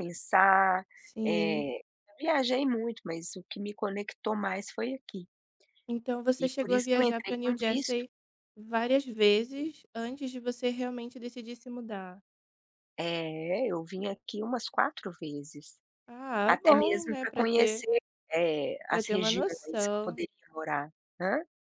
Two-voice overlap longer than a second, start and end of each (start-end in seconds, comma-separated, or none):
6.4-8.0, 16.4-17.9, 18.9-20.2